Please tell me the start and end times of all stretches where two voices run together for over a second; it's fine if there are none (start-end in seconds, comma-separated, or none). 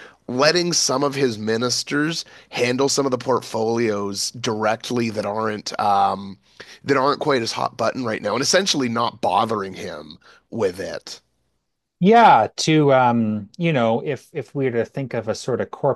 none